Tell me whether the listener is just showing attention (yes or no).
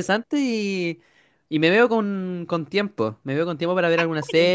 yes